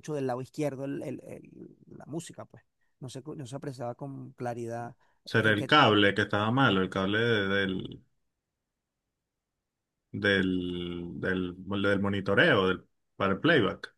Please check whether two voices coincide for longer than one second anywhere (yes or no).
no